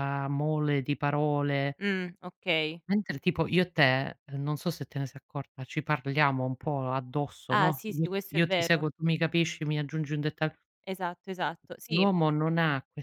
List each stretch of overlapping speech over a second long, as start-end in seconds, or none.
7.5-8.9